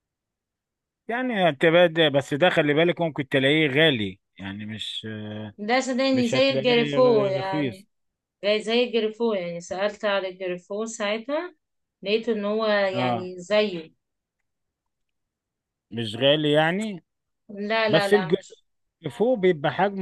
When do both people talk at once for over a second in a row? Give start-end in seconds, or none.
6.1-7.9